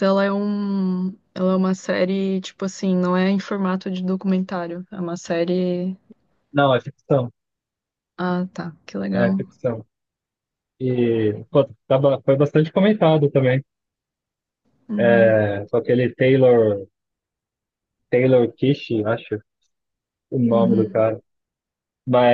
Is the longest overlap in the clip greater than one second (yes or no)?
no